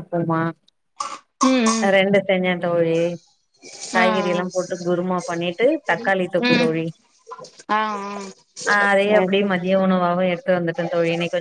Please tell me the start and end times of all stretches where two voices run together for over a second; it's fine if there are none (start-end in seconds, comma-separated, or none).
none